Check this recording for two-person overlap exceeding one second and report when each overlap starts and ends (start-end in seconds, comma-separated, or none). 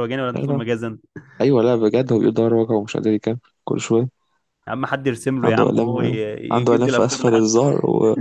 5.4-7.4